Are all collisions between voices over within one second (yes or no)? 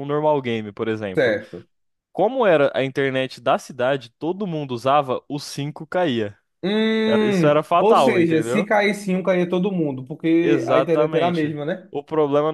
no